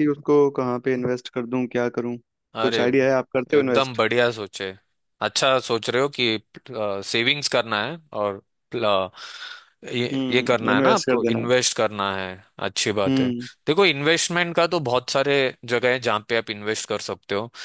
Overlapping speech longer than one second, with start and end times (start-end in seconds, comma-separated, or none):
10.1-11.5